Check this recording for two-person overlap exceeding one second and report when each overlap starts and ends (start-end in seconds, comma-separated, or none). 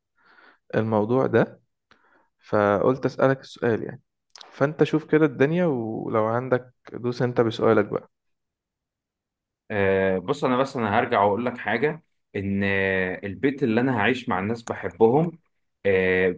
none